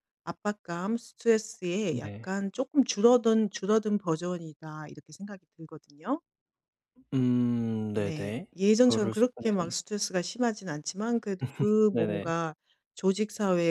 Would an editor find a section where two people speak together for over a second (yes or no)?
yes